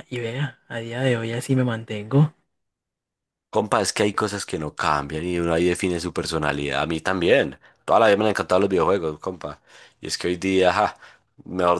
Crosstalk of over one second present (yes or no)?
no